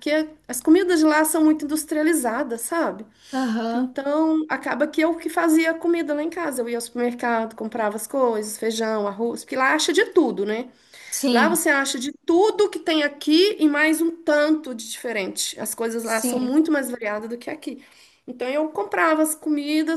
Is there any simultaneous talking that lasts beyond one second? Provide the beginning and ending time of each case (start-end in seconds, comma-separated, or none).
none